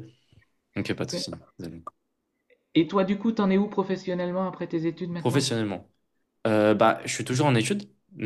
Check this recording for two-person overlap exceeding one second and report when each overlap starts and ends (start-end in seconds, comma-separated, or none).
none